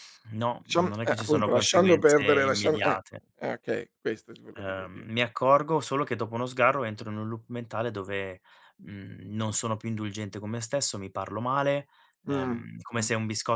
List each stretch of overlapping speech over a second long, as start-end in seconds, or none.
0.6-3.2